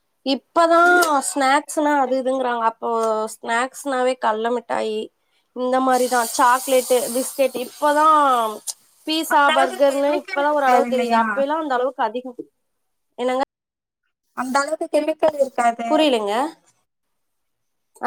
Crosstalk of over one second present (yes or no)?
yes